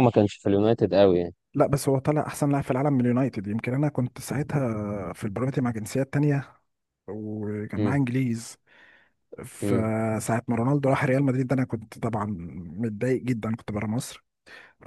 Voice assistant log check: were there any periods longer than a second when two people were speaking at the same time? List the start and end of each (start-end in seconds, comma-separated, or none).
none